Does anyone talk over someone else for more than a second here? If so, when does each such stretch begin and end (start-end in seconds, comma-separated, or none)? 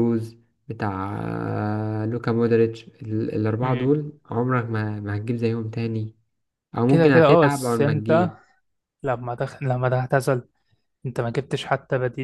6.9-8.3